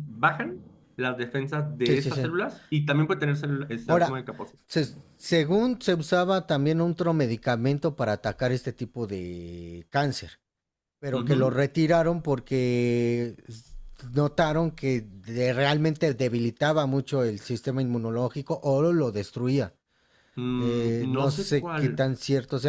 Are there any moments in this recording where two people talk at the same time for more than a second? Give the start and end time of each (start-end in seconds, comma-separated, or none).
20.6-22.0